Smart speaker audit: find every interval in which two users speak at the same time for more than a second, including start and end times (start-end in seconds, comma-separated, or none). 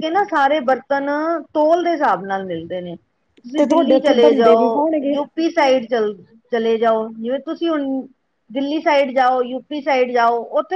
3.6-5.2